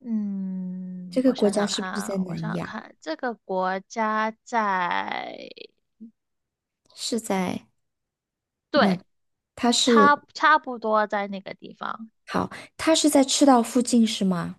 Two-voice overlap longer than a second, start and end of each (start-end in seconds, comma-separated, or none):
1.1-2.8